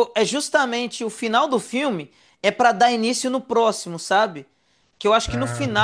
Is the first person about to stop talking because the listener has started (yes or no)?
no